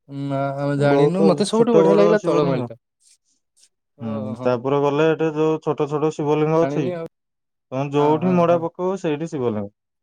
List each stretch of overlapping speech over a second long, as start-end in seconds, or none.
0.9-2.7